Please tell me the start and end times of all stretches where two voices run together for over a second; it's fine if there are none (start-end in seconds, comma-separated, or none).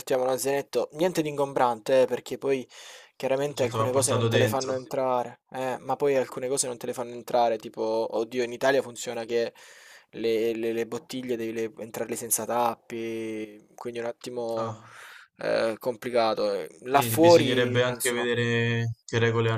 3.5-4.7, 16.9-18.3